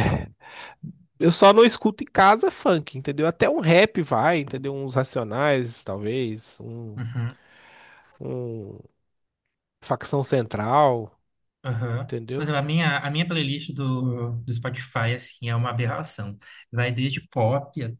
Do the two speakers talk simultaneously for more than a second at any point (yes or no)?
no